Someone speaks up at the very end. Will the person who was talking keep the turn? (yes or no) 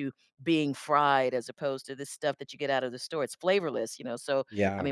yes